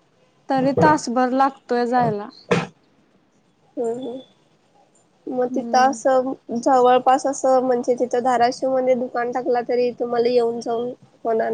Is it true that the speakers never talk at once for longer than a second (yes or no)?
yes